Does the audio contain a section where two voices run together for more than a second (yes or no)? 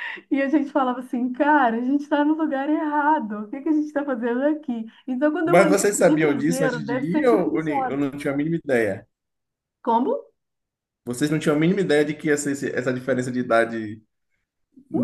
yes